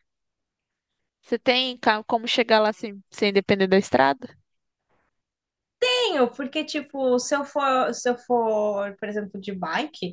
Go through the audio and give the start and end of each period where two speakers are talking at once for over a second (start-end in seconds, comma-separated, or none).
none